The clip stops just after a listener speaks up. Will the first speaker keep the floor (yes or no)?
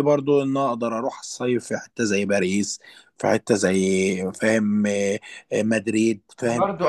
no